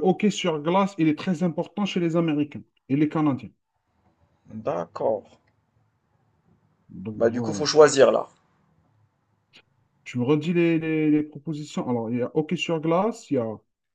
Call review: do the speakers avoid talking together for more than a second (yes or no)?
yes